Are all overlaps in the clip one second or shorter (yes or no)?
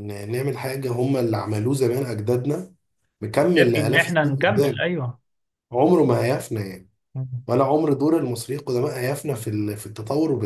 no